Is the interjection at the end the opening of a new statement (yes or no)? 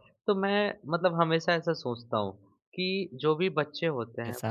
no